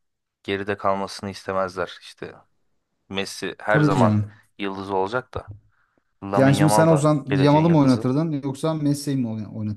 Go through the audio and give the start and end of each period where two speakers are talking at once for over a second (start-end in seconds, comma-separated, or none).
6.4-8.1